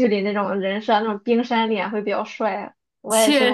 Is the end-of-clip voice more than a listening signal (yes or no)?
yes